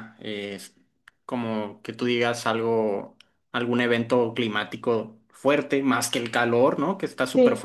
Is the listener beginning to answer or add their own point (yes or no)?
no